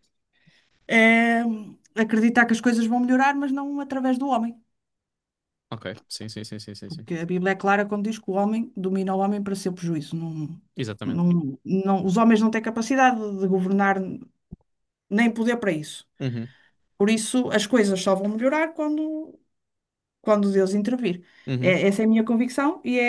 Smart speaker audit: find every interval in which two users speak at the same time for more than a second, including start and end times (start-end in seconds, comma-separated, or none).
none